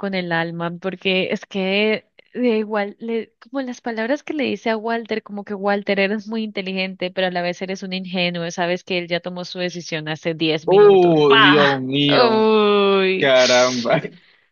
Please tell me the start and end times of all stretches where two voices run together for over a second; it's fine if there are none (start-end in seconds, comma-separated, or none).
10.7-12.4